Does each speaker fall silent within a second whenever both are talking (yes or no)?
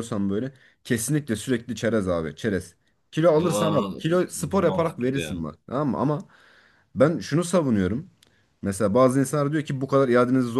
no